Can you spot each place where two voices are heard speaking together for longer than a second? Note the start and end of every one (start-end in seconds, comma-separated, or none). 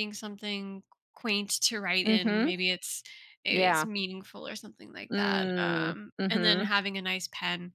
5.1-6.7